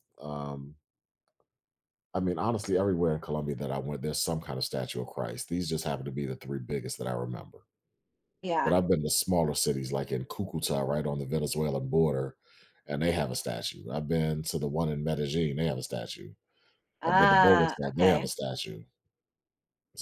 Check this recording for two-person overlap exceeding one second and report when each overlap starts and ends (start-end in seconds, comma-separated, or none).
17.0-18.3